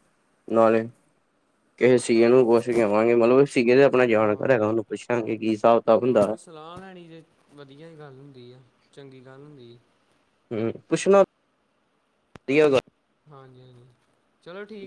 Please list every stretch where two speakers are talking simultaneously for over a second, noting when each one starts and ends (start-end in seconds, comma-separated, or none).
none